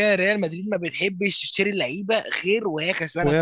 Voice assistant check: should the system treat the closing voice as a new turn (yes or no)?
no